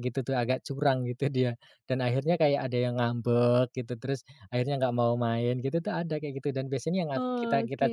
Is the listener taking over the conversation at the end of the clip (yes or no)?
no